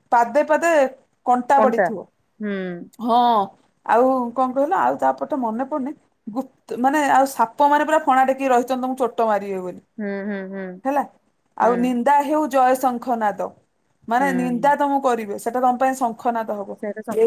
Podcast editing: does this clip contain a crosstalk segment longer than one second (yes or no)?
no